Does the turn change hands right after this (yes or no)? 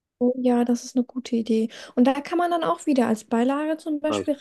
no